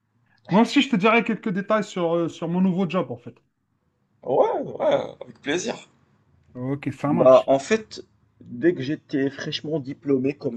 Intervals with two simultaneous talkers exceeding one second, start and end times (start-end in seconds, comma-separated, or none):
none